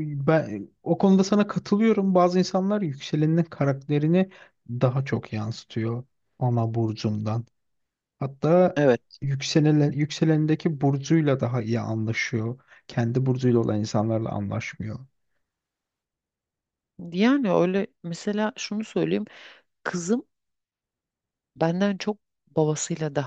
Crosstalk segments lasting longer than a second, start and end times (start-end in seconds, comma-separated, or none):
none